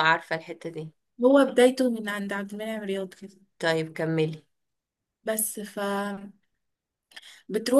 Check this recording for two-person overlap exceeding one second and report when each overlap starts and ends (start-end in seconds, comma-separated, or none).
none